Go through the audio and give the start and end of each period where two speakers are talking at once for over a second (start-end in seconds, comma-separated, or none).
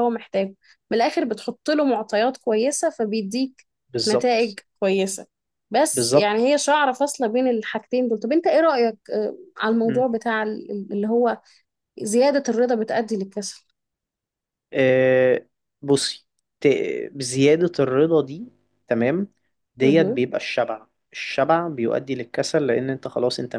none